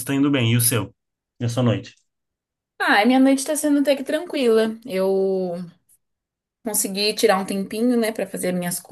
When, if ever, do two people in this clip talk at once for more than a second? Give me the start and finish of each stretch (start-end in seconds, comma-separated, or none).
none